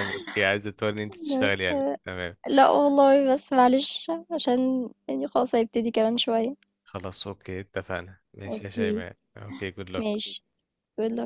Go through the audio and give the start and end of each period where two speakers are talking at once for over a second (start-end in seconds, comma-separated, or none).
none